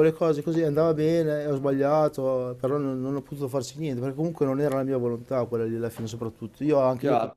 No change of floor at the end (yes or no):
no